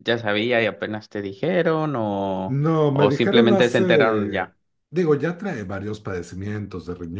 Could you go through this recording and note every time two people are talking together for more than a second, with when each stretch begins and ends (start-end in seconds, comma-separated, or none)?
2.5-4.5